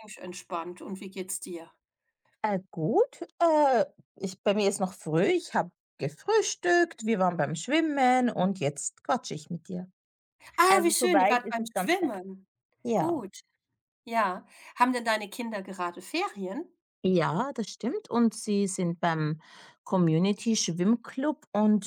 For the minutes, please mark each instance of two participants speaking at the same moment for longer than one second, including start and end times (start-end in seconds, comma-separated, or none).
10.7-12.1